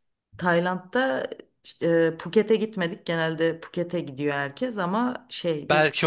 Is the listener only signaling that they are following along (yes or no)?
no